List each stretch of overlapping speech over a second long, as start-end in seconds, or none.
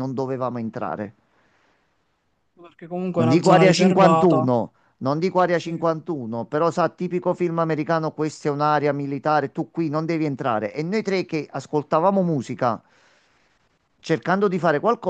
3.1-4.5